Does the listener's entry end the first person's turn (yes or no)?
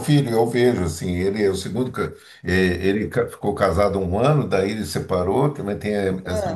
no